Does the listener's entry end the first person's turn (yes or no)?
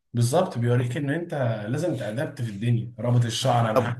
no